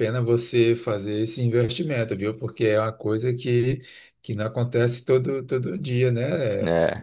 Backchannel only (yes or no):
yes